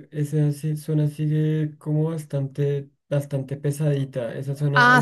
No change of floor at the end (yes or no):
no